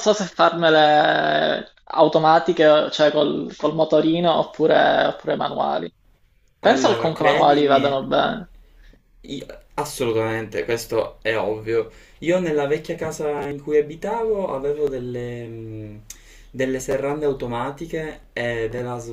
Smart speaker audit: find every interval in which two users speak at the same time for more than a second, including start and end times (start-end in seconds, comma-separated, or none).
6.6-7.9